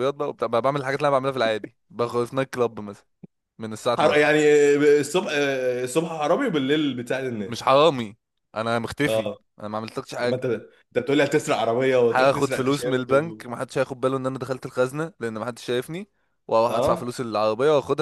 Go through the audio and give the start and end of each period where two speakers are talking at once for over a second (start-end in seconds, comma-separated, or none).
12.1-13.4